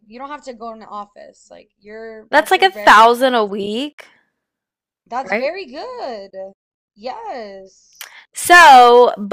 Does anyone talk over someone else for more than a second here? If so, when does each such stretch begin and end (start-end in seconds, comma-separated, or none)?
2.3-3.5